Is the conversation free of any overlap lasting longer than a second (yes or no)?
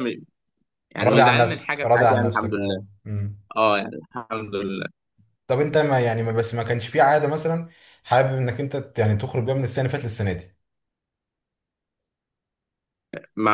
no